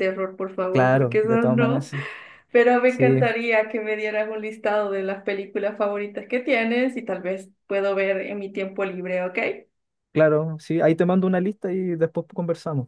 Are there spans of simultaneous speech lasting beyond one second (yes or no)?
yes